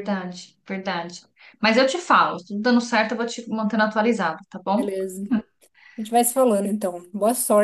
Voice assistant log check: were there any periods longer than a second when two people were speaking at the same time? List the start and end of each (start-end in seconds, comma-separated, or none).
none